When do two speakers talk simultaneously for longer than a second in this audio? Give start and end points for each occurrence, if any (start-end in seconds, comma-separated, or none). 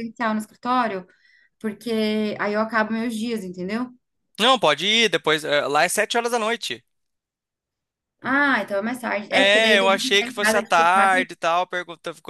9.3-11.3